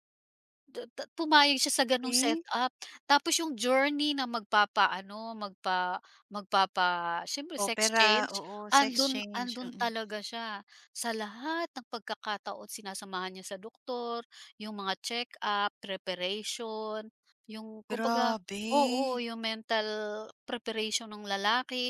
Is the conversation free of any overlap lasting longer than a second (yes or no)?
no